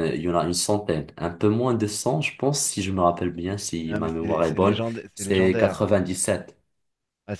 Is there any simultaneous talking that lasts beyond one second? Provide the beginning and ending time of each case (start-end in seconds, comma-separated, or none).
3.9-5.9